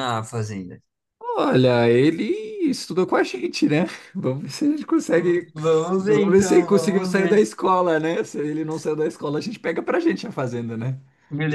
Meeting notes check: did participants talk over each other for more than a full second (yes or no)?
yes